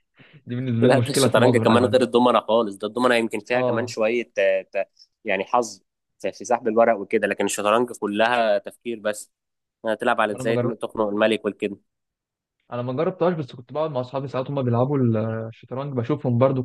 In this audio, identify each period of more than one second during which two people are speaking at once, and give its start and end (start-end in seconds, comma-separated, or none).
0.8-2.1